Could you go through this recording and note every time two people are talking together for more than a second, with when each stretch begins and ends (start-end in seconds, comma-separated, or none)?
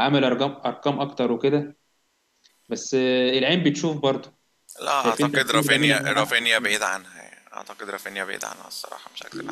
5.0-6.5